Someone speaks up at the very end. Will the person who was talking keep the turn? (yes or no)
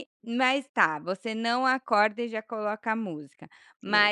yes